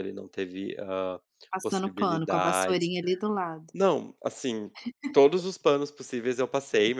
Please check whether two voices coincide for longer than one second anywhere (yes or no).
yes